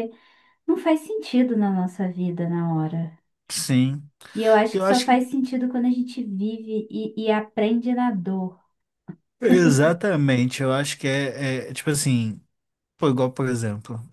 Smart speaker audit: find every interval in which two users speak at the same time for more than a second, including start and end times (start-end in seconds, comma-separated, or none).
none